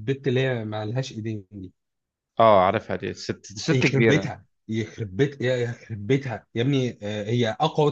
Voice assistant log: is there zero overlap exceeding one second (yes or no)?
yes